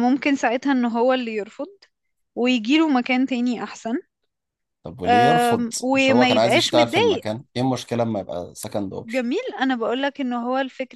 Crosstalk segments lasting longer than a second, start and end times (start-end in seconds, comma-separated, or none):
5.0-7.2